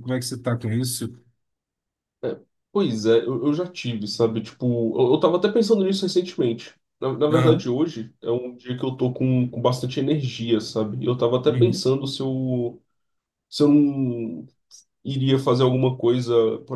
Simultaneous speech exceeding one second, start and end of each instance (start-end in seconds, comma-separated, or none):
none